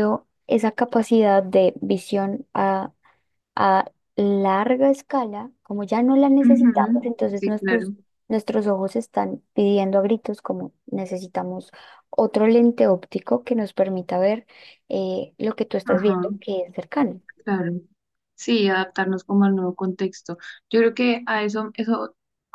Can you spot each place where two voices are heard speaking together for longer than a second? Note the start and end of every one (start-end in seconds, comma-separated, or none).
6.4-7.9